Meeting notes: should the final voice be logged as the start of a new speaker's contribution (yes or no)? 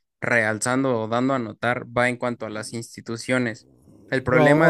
yes